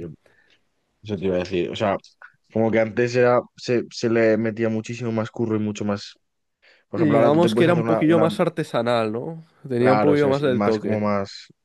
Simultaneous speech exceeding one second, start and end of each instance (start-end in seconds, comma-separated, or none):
6.9-8.3, 9.8-11.0